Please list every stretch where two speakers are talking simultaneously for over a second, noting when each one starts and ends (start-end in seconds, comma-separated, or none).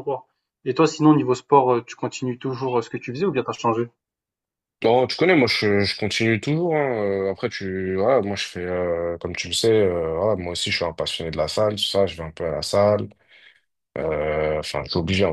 none